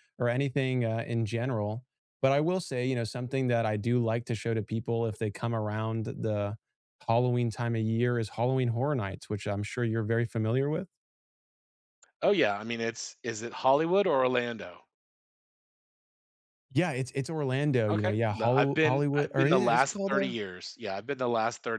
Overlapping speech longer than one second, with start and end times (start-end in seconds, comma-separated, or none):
17.9-20.4